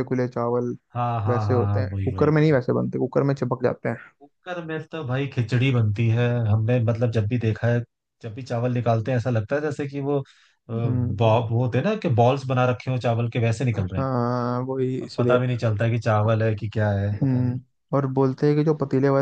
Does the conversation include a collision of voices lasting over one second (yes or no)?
yes